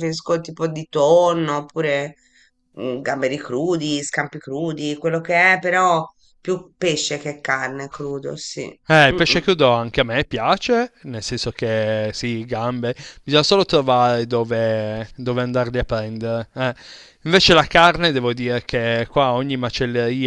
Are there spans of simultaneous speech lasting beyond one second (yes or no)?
no